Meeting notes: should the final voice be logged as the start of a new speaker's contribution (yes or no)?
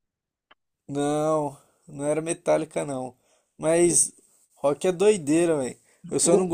no